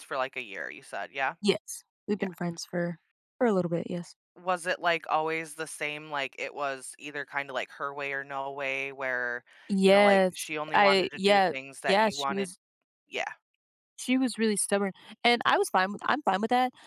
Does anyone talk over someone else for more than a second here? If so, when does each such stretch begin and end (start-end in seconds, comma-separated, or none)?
9.8-12.5